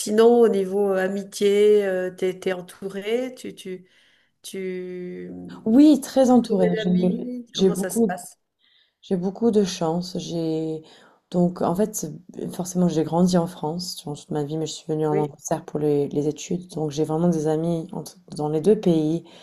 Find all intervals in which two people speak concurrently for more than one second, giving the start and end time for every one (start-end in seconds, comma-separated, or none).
6.4-8.2